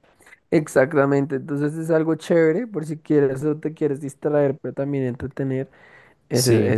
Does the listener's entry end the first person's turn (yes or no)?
no